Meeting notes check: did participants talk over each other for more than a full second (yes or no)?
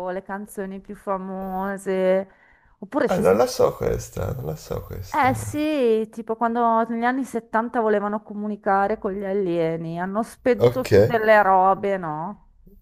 no